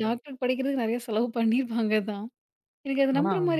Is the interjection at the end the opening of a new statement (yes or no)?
no